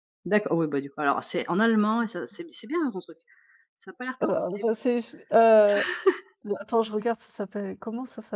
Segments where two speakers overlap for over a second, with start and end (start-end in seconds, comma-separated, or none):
none